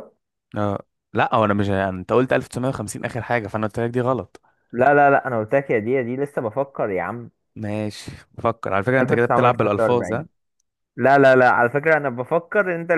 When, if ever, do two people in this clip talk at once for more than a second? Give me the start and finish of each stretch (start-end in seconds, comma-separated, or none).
9.0-10.2